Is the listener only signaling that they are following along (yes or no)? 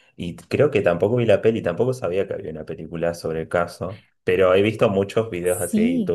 yes